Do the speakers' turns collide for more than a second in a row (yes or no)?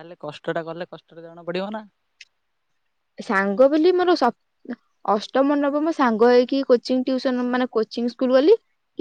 no